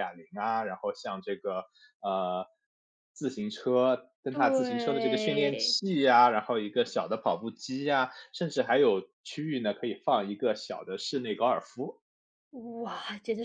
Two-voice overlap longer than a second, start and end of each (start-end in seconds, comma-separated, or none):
4.3-5.8